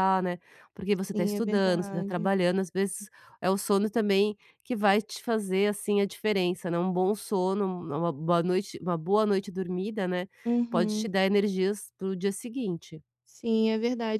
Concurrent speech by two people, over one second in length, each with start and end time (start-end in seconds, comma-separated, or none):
1.1-2.3